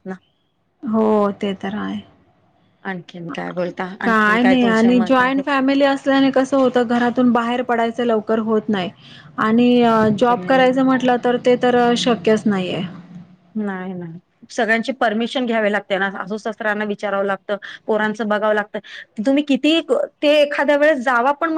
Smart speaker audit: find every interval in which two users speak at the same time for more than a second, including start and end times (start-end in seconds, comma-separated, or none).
4.0-5.4